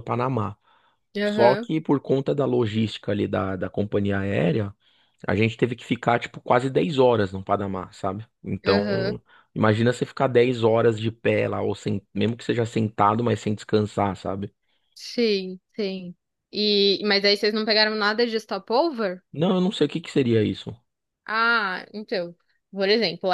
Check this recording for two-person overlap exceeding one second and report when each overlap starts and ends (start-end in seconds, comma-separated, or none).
none